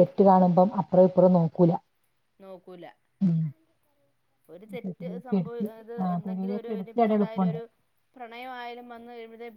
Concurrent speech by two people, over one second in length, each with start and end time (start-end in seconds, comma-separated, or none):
4.8-7.6